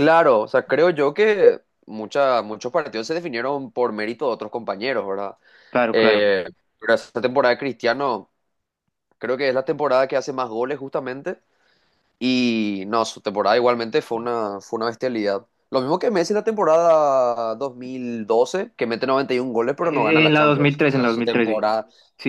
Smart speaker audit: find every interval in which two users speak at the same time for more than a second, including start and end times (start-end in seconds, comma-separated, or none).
19.8-21.6